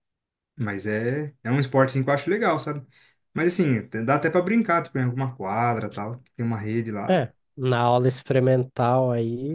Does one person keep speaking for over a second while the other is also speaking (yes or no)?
no